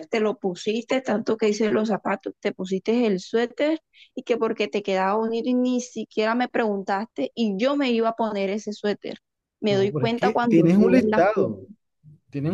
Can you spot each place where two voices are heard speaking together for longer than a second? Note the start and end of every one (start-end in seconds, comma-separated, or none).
9.7-11.7